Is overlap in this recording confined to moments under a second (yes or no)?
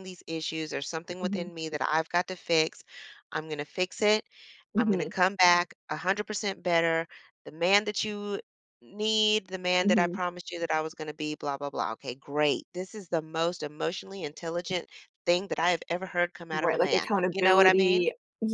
no